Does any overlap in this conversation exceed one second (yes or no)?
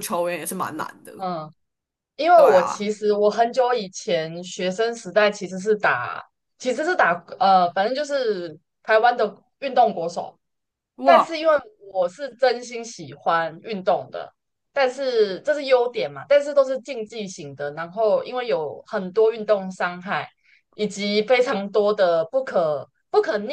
no